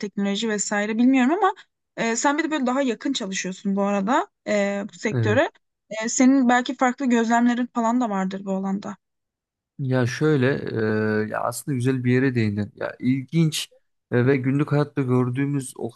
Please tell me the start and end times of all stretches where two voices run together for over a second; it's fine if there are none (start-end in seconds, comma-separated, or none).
none